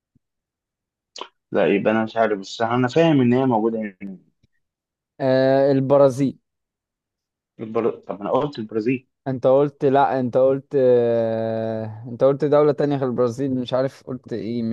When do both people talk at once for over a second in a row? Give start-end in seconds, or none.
none